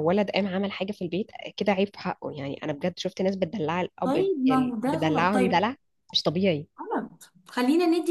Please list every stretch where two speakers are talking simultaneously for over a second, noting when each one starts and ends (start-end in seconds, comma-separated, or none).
4.0-5.7